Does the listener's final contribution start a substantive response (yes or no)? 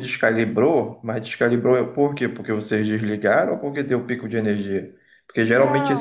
no